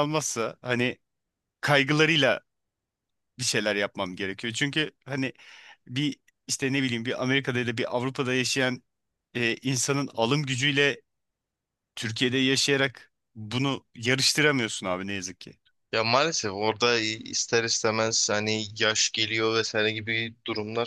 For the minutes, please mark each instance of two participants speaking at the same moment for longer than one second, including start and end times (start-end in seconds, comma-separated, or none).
none